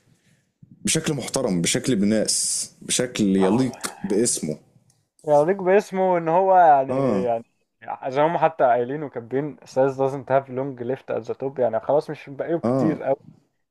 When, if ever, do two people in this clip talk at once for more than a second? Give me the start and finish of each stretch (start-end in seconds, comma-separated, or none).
none